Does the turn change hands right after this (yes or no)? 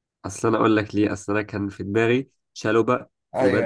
no